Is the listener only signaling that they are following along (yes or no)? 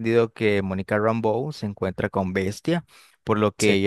yes